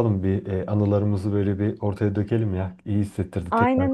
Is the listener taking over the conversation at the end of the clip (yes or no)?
yes